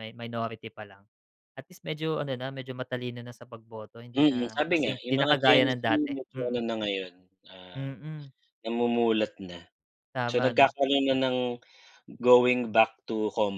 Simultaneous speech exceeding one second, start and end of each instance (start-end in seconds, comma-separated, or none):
4.2-6.6